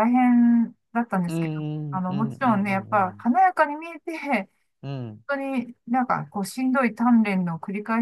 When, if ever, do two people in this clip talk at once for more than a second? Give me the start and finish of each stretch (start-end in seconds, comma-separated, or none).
1.3-3.3